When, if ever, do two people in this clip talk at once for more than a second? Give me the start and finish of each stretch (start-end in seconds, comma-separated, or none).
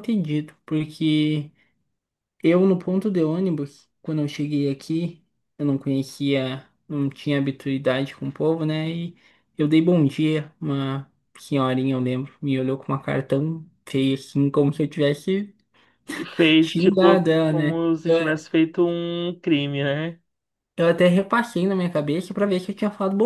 16.6-17.8